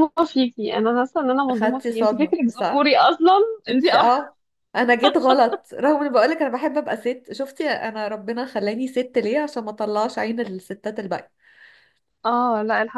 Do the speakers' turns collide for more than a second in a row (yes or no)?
yes